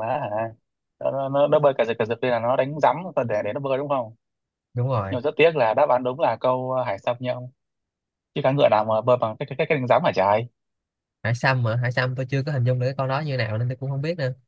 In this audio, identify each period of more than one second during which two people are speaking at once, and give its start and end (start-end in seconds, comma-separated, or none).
none